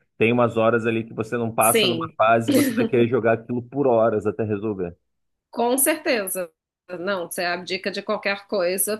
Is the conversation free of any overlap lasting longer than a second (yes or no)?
yes